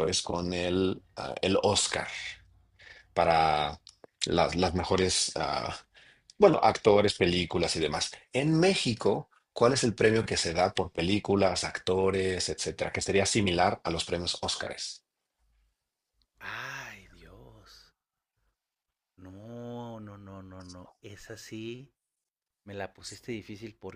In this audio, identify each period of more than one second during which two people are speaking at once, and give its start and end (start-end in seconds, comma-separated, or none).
none